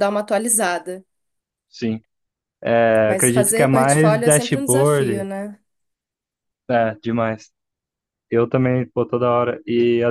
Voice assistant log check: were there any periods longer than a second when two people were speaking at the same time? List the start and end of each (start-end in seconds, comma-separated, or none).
3.0-5.3